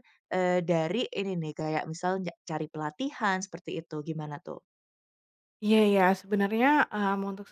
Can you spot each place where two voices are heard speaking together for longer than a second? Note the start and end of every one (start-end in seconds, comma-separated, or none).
none